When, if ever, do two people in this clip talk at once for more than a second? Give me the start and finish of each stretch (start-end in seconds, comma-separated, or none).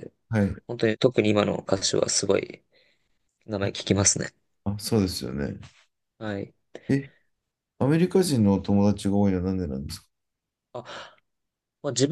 none